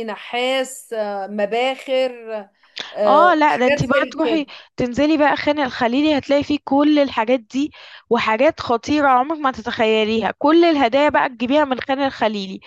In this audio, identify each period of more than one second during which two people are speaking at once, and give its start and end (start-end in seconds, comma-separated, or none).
3.1-4.5